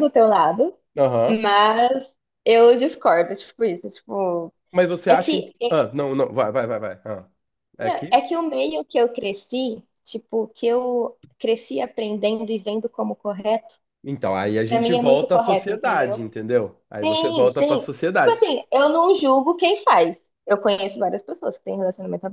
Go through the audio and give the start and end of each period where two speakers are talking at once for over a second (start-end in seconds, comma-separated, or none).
14.7-16.2, 17.0-18.4